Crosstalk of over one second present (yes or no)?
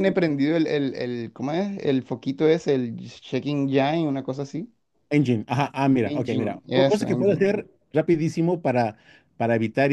yes